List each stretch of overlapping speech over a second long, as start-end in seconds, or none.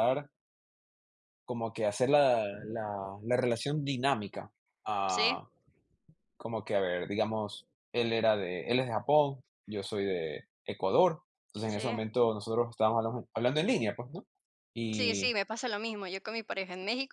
none